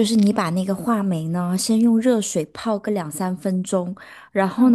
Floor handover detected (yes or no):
no